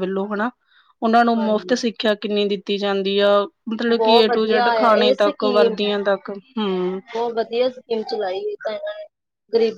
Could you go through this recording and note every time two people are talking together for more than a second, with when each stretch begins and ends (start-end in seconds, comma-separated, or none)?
4.0-5.7